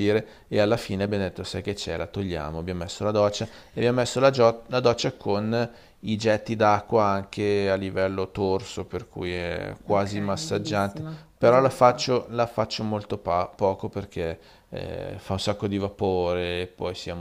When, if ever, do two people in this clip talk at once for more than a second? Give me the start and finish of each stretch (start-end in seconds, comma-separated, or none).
9.9-12.1